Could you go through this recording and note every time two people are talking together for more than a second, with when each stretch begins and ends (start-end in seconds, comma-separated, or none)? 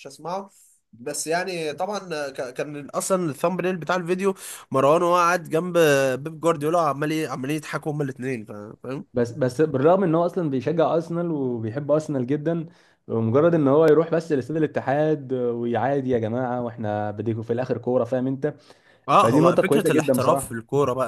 19.1-20.6